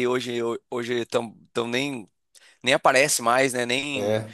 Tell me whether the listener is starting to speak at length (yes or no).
no